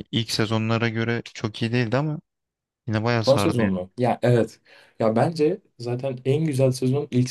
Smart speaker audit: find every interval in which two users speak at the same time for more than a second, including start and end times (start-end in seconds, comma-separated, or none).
none